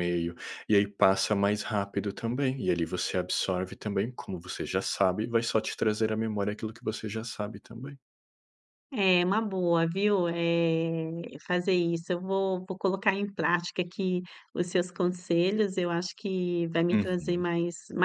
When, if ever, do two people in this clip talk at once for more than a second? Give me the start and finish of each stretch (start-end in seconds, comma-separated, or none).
none